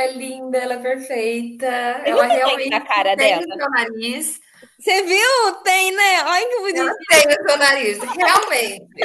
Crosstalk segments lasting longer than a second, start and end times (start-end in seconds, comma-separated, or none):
2.0-3.6